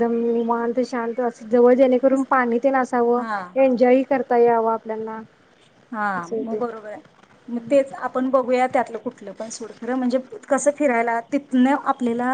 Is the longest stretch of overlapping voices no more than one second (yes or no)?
yes